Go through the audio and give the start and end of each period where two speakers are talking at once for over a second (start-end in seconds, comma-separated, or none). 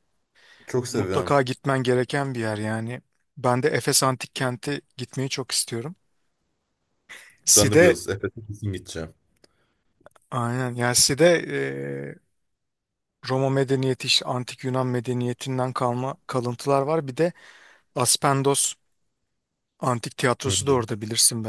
none